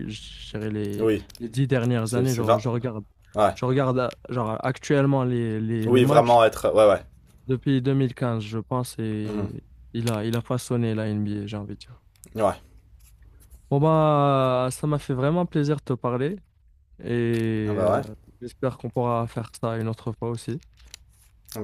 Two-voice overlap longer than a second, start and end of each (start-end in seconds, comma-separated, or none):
none